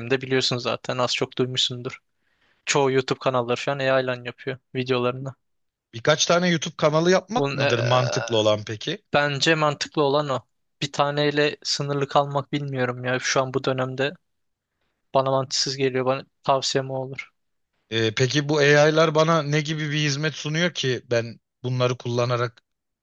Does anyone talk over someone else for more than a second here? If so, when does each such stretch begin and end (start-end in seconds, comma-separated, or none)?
none